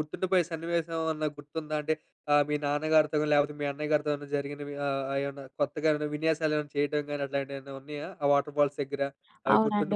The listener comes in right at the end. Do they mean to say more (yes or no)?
yes